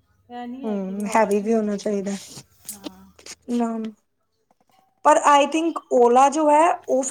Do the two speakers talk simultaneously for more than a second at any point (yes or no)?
yes